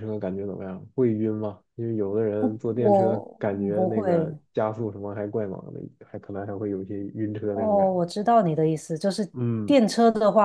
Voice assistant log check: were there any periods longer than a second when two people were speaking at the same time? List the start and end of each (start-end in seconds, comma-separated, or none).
2.7-4.4